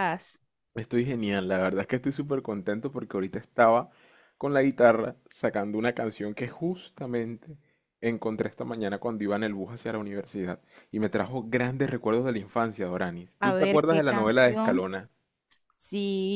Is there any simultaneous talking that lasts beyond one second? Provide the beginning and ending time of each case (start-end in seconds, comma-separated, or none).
13.4-14.8